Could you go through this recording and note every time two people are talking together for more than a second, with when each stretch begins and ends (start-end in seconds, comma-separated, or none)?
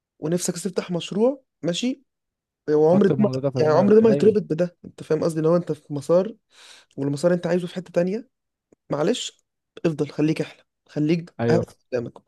2.9-4.3